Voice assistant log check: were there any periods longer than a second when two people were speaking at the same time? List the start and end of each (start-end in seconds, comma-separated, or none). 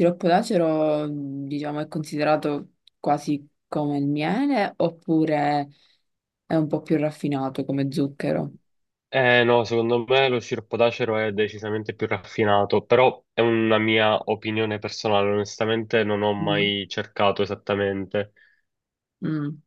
none